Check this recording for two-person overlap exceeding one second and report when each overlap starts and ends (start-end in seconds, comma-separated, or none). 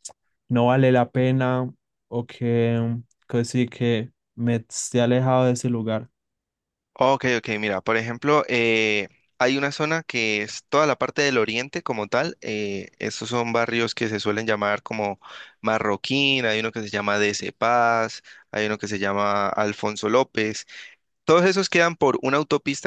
none